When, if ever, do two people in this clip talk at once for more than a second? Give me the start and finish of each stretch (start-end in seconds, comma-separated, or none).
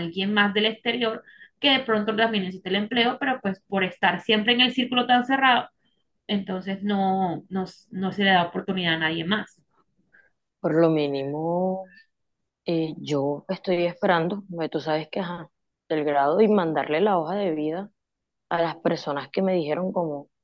none